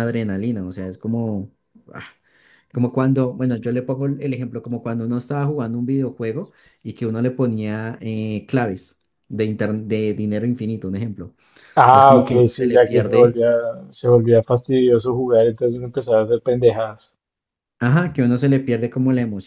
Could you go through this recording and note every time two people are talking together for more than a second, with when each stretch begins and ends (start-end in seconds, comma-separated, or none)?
11.8-13.4